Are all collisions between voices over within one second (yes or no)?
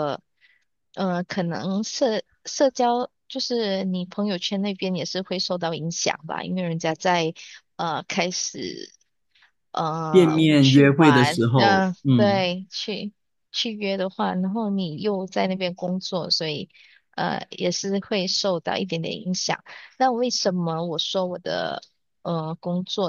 no